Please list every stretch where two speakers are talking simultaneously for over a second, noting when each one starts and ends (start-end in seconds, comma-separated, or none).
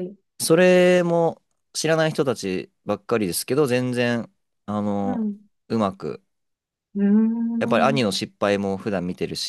none